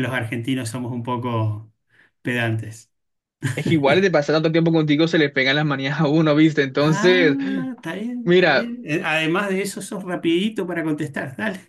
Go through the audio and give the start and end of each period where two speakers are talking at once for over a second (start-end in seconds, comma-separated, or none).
none